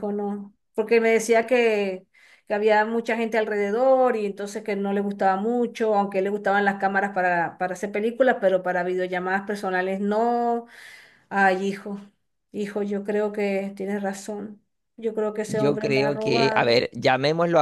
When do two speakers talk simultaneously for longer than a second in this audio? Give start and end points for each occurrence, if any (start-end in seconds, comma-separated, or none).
15.5-16.8